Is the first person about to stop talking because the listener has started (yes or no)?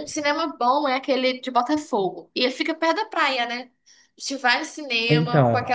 no